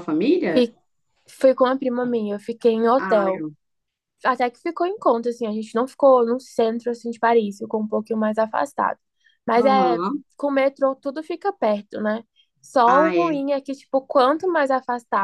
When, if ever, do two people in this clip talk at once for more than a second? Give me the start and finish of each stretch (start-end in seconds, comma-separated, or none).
none